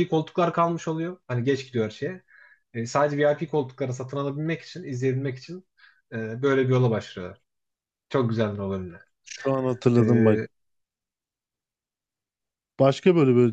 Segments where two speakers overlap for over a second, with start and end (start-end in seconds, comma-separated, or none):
none